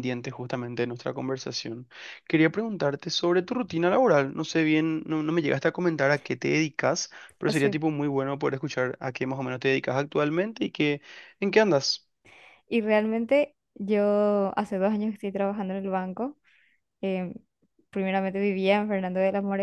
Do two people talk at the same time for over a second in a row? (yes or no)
no